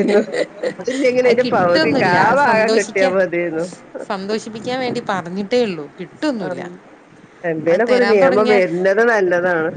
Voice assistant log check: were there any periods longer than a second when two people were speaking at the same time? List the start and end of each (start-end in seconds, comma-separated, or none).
1.3-3.1